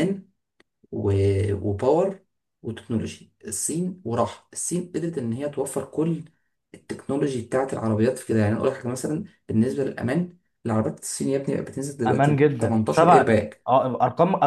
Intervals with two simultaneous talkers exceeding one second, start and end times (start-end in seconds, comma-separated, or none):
12.1-13.7